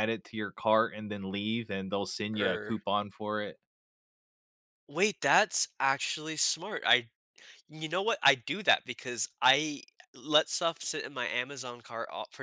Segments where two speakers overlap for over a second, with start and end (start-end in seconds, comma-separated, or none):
none